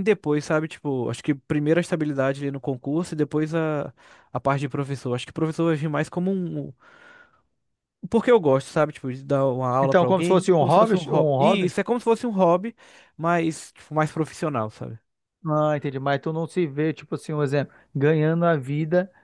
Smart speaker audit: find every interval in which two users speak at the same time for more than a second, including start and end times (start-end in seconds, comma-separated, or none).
9.8-11.7